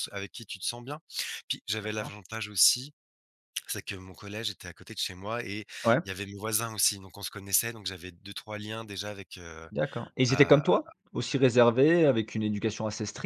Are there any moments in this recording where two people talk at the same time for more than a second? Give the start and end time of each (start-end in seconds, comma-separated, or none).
none